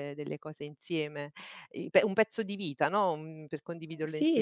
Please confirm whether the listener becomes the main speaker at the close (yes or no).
yes